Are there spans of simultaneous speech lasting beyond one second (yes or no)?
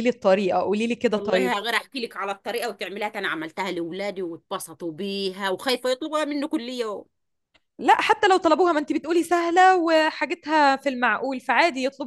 no